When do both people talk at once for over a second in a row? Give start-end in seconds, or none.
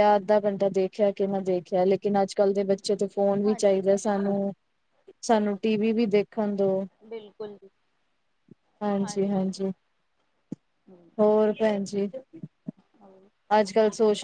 none